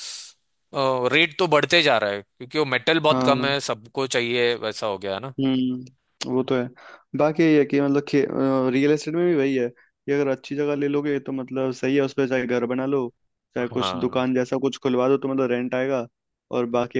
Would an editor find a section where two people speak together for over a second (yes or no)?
no